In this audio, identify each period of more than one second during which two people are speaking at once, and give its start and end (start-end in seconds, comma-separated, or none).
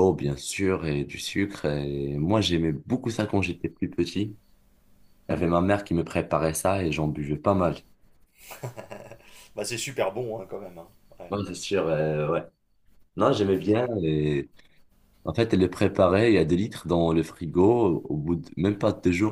none